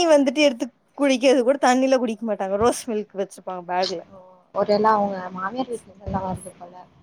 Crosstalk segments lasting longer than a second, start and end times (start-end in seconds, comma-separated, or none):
none